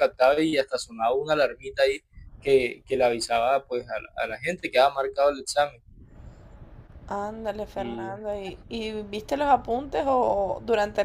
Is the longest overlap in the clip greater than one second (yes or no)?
no